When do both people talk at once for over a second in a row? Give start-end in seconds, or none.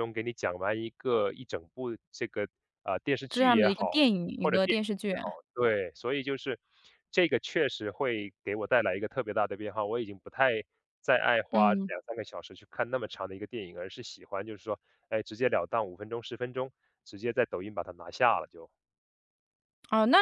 3.3-5.1